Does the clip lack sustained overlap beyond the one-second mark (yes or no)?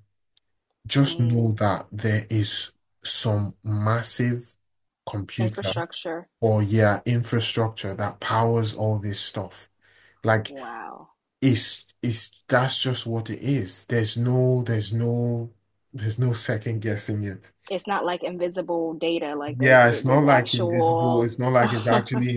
no